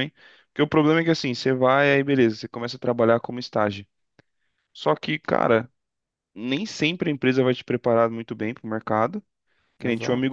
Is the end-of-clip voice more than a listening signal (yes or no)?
no